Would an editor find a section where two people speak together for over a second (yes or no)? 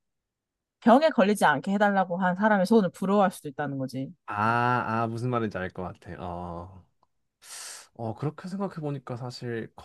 no